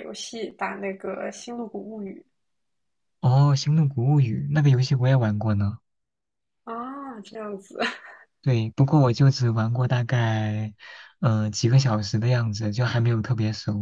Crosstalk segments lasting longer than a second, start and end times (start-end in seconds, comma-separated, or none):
none